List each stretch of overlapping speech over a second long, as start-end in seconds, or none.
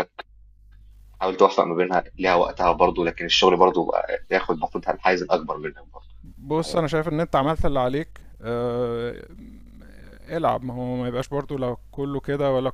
none